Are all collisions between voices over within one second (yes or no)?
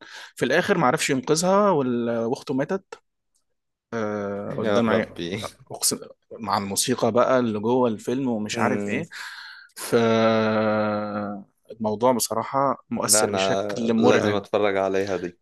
no